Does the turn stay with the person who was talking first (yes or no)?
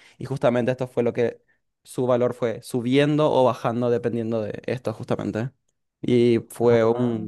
yes